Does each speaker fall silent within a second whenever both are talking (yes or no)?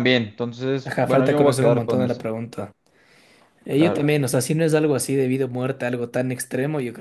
no